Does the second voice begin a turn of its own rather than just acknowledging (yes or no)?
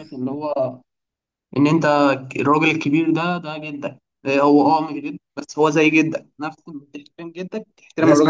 yes